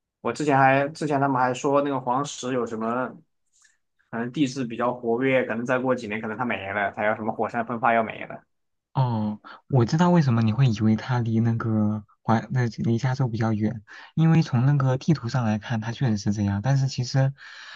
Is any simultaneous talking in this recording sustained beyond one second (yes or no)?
no